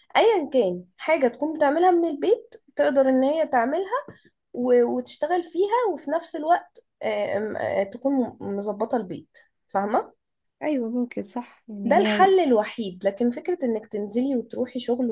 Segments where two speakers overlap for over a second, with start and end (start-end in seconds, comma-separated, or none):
none